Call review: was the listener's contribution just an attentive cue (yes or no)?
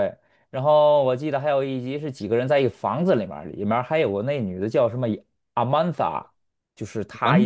yes